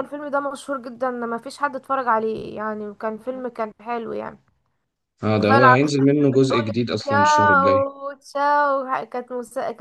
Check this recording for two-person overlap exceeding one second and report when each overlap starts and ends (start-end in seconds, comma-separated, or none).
5.4-7.9